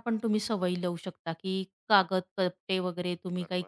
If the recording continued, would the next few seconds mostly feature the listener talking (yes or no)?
no